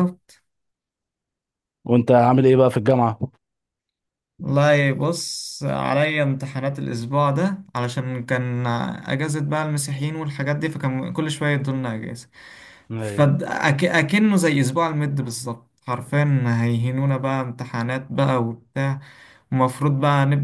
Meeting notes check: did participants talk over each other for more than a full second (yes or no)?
no